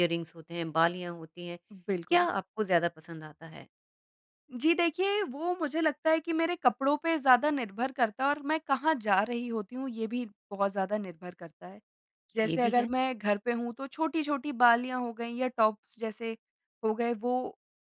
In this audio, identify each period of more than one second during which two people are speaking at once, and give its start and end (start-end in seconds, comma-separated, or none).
none